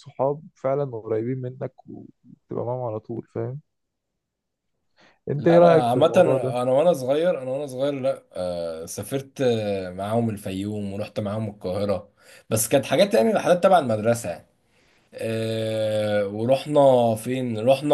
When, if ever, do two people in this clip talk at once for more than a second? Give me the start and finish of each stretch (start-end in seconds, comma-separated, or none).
5.3-6.6